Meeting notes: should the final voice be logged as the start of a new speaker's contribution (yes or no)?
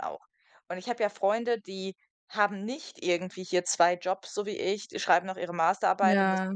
no